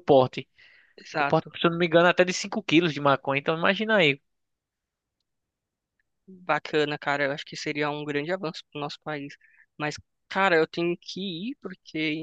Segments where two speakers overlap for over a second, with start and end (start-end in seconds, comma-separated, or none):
none